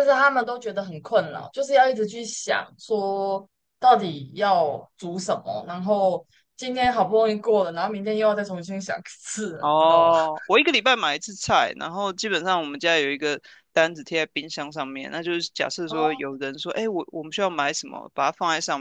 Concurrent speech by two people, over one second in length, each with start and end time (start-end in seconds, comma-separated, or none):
none